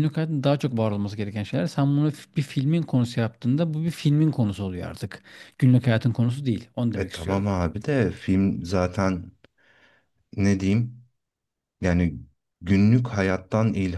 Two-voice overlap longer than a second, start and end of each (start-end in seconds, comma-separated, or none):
none